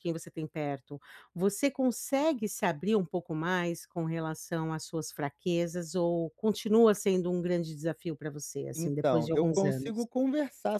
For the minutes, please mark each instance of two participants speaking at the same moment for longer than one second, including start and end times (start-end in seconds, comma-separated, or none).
8.7-10.1